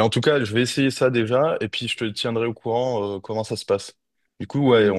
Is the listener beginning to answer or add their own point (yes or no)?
no